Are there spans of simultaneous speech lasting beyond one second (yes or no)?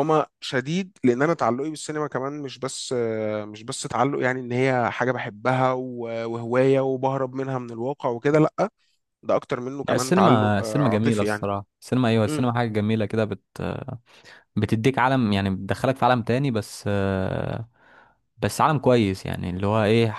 yes